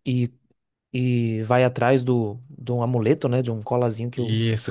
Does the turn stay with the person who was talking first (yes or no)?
no